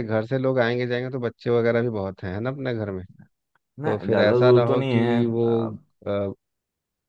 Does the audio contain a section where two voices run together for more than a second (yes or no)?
yes